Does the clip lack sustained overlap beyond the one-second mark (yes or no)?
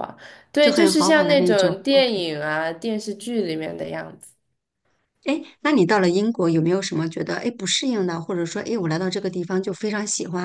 no